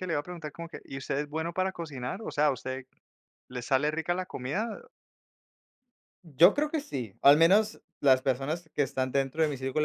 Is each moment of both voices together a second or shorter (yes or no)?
yes